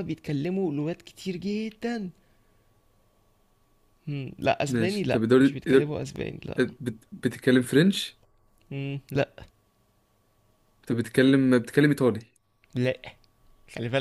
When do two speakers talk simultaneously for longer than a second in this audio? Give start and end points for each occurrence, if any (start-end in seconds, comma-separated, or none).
4.7-6.0